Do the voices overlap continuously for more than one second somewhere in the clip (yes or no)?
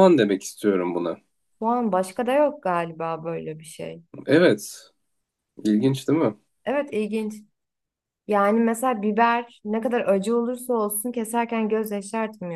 no